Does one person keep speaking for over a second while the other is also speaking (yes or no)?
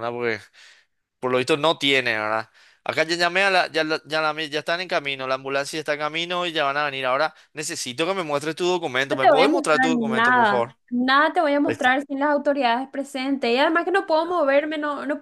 yes